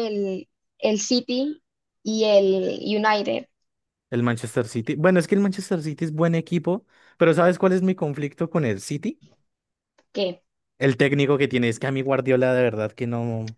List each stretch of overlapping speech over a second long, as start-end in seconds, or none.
none